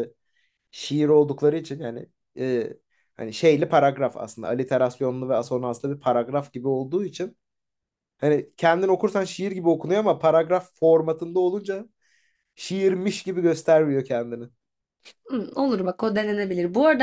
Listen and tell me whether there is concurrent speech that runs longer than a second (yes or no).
no